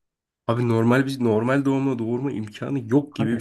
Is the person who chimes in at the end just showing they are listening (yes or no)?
no